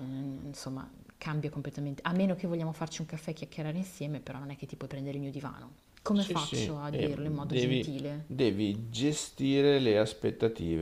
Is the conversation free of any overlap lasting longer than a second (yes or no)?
no